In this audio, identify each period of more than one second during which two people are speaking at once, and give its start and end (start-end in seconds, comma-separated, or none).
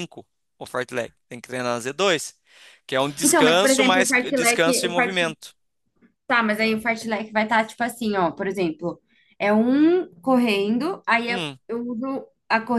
3.2-5.2